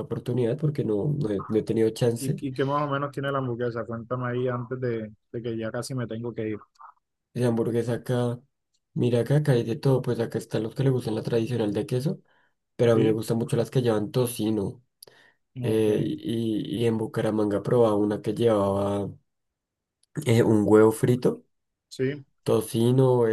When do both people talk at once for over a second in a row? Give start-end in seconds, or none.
none